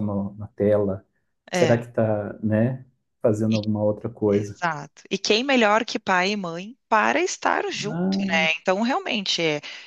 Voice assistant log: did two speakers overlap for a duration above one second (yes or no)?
no